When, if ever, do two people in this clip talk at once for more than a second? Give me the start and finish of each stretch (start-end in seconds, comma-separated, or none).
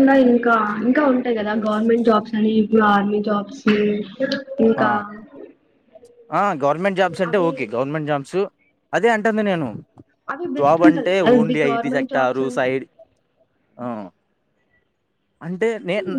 10.6-12.7